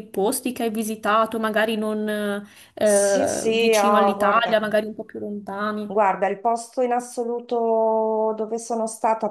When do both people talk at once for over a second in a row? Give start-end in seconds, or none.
2.8-4.6